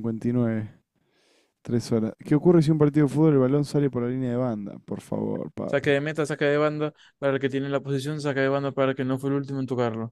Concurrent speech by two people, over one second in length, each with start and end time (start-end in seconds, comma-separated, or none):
none